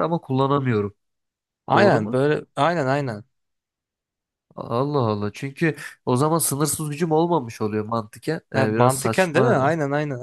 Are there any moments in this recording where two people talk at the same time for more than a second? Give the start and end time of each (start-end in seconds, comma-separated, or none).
8.5-9.7